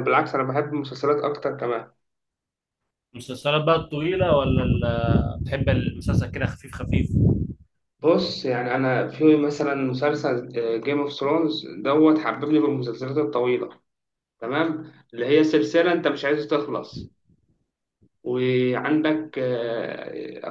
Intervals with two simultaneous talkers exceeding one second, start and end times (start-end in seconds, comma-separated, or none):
none